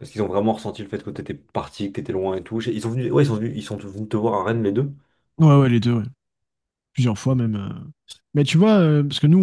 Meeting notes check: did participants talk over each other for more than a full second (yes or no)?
no